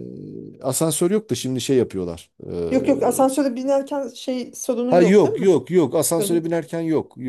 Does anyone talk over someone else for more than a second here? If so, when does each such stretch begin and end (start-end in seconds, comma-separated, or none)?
none